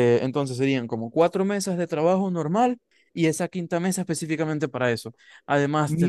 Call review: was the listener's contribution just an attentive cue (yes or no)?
no